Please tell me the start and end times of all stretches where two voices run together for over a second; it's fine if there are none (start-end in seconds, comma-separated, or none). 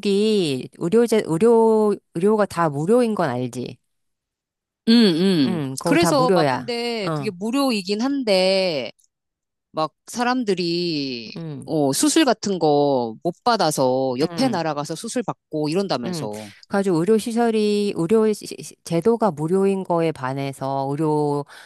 5.4-7.3